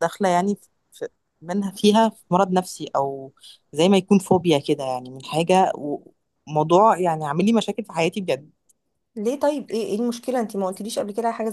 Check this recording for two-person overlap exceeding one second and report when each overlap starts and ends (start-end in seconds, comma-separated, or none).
none